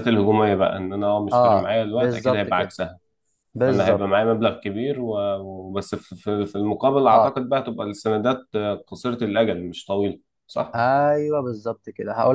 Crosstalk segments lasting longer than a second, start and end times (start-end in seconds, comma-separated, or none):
1.3-2.7